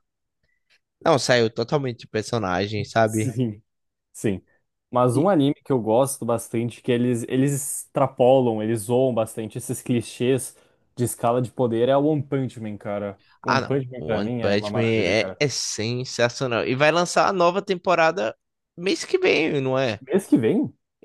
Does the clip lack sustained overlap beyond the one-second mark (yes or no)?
no